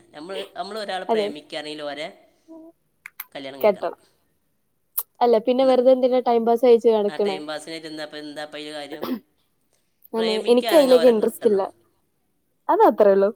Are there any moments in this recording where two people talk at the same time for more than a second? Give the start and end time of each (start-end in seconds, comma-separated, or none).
10.2-11.6